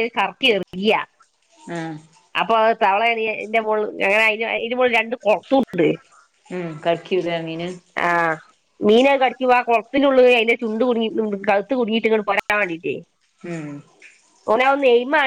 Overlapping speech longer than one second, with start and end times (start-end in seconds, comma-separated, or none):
none